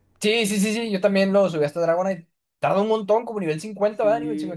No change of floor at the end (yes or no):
no